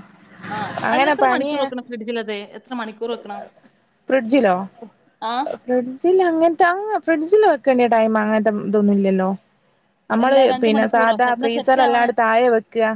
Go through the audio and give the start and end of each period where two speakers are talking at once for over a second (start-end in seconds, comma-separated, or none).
10.2-12.1